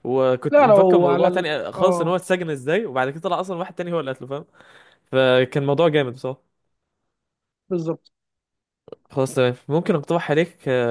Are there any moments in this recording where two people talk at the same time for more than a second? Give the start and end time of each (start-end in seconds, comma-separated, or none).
0.5-2.1